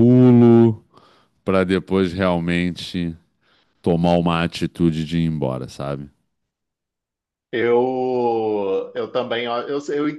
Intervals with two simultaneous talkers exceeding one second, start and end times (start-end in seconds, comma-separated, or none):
none